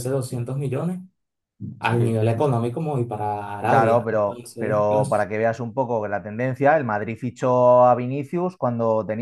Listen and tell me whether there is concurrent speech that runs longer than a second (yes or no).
yes